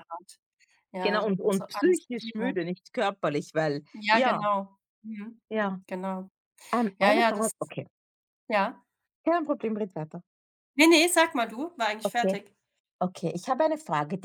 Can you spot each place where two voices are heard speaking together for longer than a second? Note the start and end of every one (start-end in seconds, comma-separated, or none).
1.0-2.6